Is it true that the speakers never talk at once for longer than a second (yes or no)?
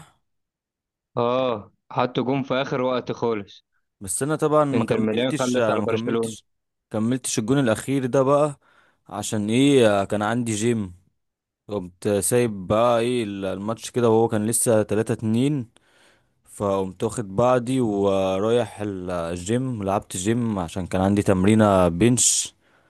no